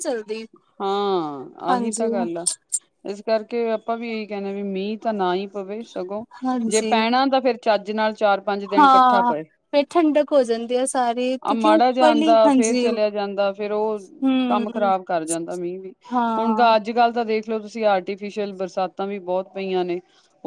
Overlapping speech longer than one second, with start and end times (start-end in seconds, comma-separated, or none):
11.5-12.9